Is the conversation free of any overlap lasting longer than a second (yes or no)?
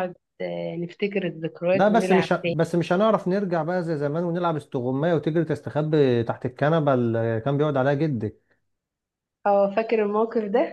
yes